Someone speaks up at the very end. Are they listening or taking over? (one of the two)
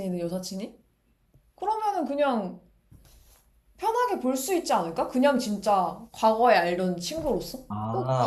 taking over